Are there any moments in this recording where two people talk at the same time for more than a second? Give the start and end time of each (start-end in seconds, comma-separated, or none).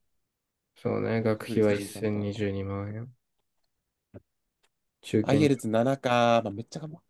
1.1-2.5